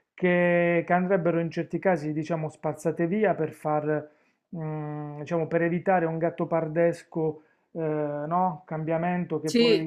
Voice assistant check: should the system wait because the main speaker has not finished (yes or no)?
yes